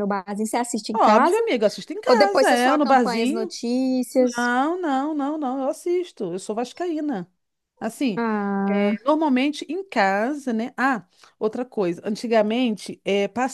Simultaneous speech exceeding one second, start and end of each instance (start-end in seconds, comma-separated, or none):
2.1-3.5